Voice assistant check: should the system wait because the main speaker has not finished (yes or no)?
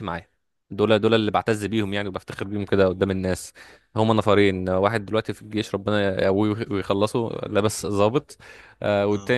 yes